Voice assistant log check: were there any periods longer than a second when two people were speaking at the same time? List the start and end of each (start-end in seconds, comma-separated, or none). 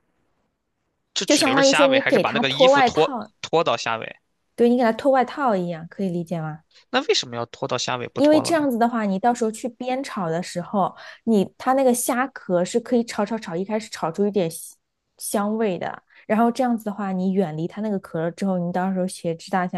1.2-3.3